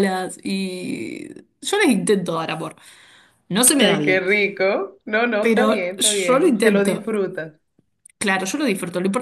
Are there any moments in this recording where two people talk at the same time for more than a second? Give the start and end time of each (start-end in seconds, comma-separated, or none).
5.4-7.1